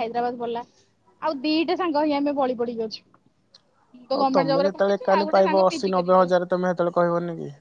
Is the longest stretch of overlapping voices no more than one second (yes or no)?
no